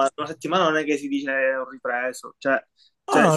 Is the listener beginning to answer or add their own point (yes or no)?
yes